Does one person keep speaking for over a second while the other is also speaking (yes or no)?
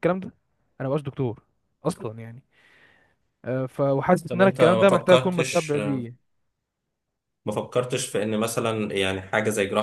yes